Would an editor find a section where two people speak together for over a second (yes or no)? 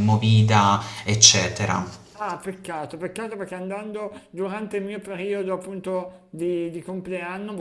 no